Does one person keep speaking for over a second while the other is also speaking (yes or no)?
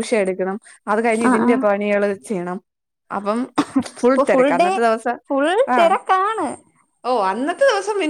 no